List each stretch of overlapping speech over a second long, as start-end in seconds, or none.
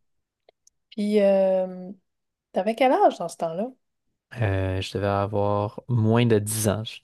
none